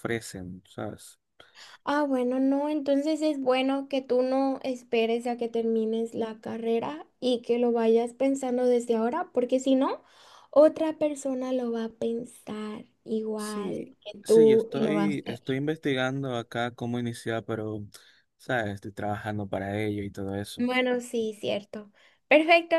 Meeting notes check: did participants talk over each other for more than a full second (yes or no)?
yes